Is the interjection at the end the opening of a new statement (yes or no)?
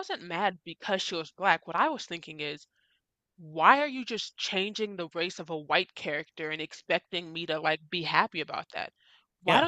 no